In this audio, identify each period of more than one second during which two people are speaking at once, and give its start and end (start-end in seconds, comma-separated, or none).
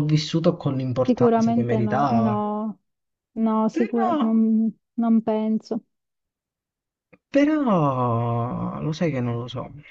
1.1-2.4